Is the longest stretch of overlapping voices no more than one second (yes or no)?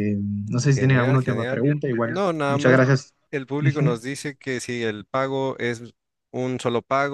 no